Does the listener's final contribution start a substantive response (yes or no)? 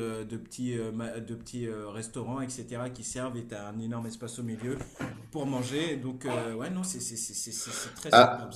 yes